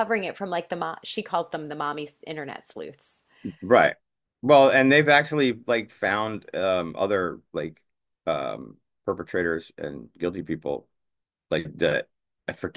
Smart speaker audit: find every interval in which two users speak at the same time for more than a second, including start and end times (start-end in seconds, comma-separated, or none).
none